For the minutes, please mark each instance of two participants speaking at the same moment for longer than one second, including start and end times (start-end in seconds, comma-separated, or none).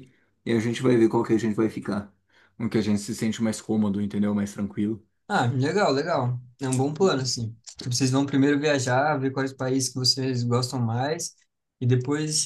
none